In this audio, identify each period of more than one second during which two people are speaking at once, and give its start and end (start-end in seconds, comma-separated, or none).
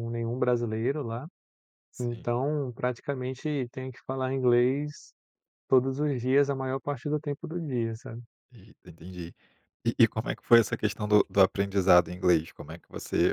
none